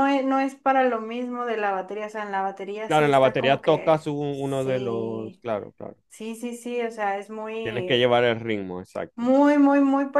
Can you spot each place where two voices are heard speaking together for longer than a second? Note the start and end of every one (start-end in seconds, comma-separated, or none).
2.9-5.4